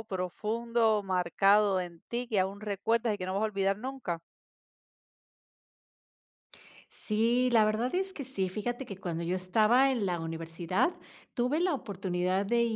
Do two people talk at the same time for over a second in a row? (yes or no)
no